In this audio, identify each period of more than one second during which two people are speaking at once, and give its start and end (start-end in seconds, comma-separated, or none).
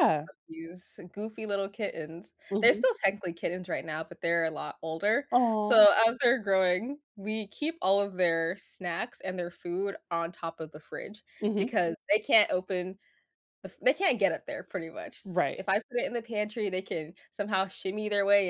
none